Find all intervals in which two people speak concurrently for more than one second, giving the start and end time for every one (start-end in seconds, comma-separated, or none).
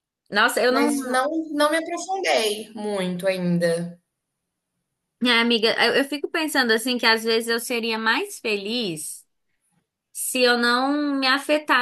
none